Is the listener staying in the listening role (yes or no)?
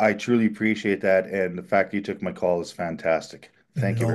no